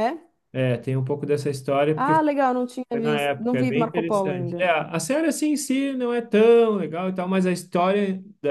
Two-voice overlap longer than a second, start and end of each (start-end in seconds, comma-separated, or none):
2.9-4.7